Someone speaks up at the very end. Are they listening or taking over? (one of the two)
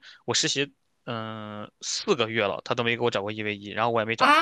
taking over